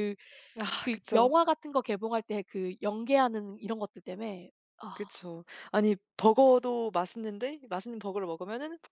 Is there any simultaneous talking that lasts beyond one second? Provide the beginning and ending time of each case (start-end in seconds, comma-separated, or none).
none